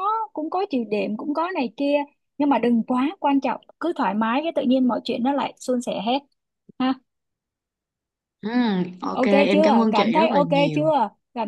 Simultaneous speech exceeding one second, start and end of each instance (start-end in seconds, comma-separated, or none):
9.1-10.9